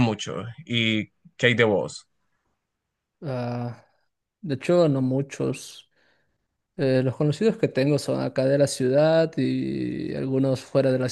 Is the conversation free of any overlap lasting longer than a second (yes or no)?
yes